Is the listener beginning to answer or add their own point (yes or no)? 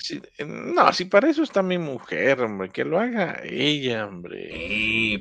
yes